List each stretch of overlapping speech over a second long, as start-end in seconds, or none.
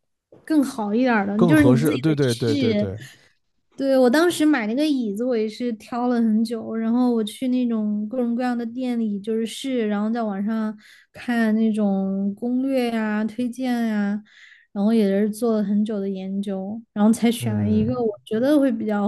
1.4-2.9